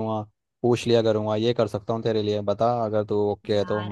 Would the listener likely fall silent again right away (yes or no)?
no